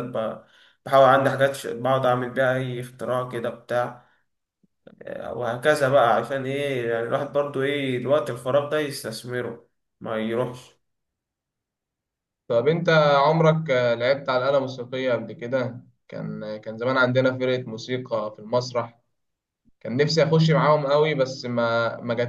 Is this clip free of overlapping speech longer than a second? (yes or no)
yes